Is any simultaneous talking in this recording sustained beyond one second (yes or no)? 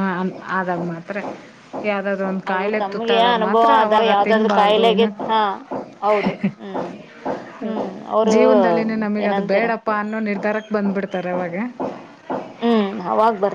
yes